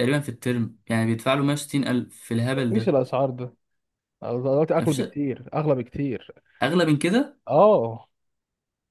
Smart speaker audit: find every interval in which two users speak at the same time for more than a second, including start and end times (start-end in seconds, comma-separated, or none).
none